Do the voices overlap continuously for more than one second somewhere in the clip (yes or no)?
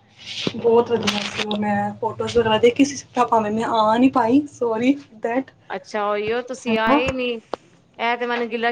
no